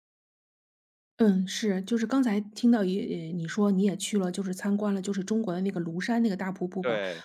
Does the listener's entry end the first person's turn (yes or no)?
no